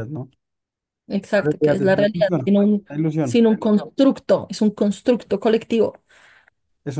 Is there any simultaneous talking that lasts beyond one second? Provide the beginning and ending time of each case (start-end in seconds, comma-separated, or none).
1.4-3.4